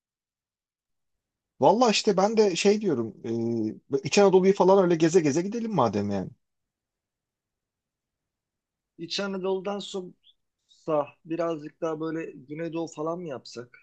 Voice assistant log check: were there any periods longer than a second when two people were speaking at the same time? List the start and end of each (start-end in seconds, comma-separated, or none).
none